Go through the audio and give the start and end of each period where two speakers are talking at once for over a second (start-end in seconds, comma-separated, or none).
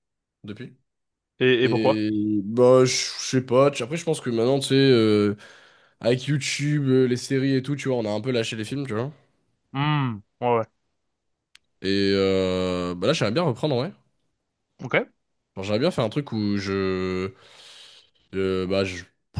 none